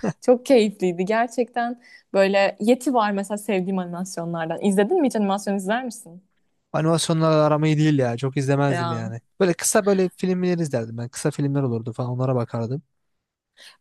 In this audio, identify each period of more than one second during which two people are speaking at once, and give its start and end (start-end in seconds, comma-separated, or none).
none